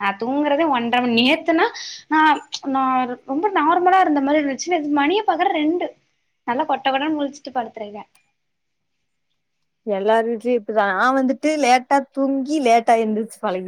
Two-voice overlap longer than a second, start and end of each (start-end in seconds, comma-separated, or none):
none